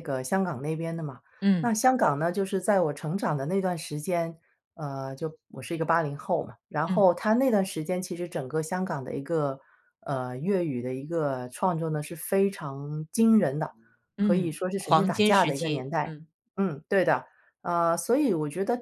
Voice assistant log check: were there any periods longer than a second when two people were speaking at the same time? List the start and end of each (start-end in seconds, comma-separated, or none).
14.2-16.1